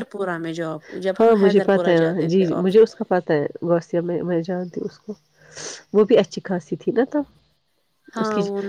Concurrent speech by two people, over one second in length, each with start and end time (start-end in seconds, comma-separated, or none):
1.2-2.9